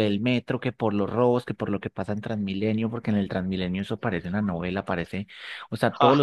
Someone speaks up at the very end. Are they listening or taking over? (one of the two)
listening